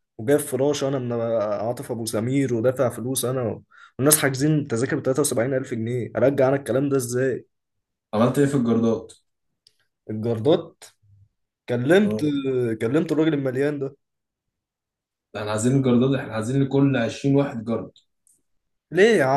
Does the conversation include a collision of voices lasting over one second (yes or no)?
no